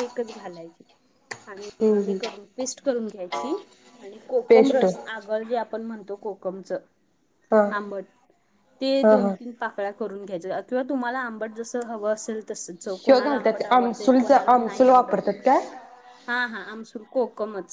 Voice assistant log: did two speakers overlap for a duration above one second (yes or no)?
yes